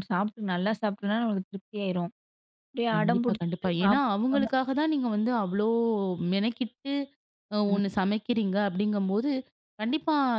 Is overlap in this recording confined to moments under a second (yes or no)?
no